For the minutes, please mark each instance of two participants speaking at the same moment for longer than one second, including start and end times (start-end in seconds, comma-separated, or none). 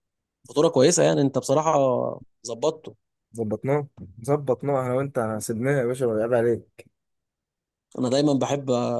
none